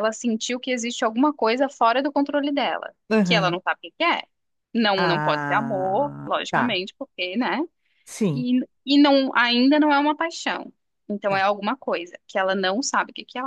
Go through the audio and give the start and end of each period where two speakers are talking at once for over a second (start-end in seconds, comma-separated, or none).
5.0-6.8